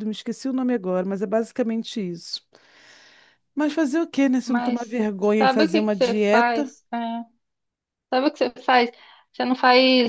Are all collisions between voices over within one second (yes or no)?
no